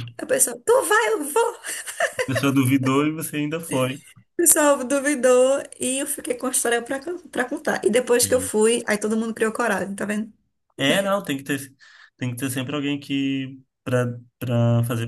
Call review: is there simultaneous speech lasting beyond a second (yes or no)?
no